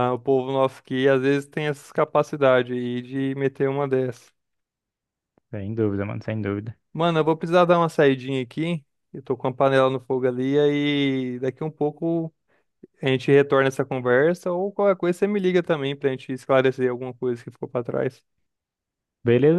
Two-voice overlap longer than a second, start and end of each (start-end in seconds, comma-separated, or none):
none